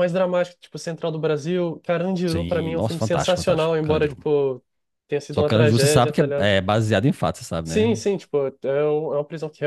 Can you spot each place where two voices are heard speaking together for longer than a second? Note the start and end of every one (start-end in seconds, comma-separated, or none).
2.2-4.2, 5.3-6.5